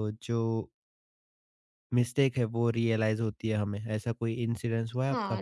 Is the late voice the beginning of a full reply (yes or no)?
yes